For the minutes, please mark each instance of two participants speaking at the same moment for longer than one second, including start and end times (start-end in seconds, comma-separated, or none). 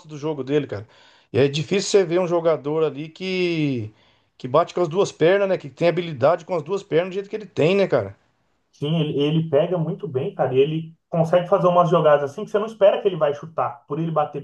none